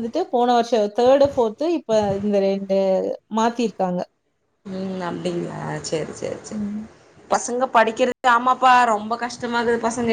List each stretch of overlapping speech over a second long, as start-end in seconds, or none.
none